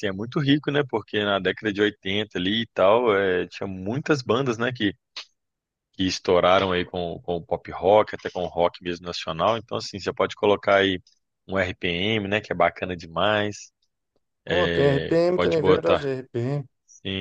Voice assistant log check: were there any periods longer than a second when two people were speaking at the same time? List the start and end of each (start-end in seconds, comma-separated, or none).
14.5-16.1